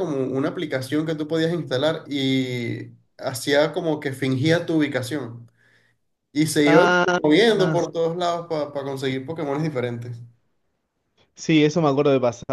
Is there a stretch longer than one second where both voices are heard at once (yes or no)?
no